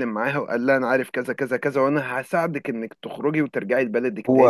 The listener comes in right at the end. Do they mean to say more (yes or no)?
yes